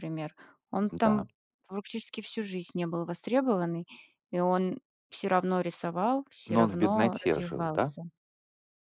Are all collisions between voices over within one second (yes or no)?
no